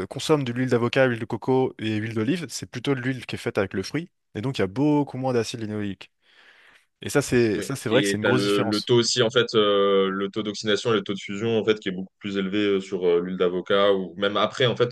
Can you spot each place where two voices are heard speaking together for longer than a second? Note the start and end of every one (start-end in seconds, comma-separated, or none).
7.5-8.9